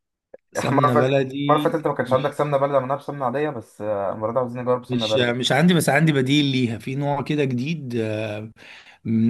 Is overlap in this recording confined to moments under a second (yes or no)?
no